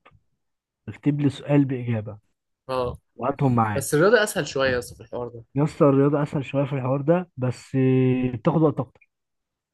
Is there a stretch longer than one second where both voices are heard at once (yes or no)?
no